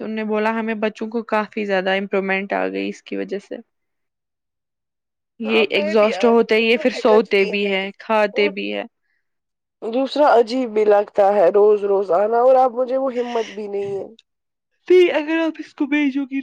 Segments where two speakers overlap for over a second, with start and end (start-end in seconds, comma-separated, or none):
5.5-7.3